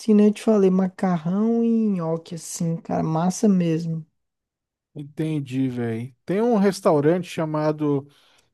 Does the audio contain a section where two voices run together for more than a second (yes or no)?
no